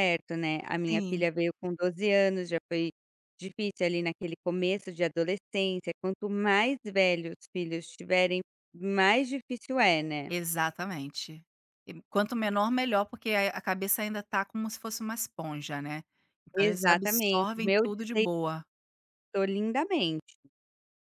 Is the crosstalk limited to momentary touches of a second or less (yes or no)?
no